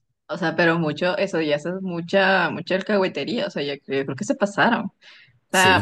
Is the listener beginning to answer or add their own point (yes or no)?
yes